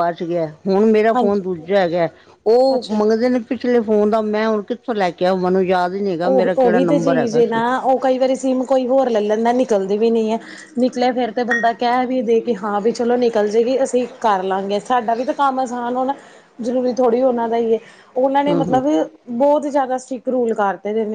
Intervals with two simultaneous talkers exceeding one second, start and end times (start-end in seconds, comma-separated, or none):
6.3-7.6